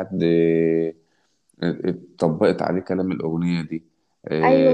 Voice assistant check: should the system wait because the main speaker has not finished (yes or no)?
no